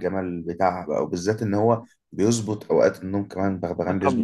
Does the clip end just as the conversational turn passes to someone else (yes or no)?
yes